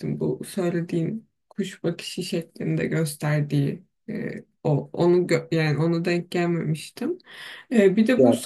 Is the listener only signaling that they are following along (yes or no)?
yes